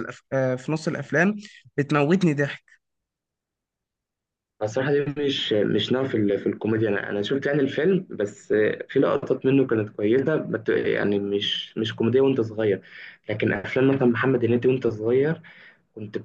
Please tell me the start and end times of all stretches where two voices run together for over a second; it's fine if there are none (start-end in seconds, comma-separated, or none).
none